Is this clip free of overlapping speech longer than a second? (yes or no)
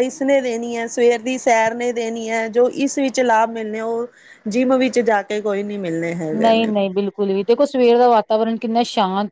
yes